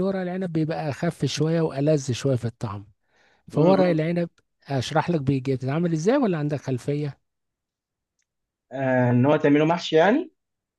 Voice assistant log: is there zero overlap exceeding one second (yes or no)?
yes